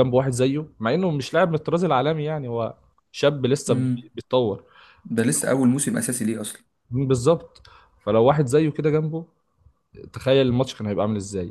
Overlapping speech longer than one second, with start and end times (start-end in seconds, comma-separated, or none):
none